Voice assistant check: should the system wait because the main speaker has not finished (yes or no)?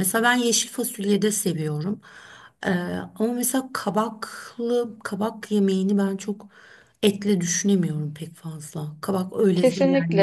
no